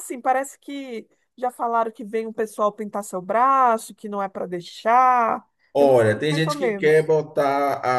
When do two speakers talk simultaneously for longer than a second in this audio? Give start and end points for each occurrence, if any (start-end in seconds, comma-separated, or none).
5.7-7.1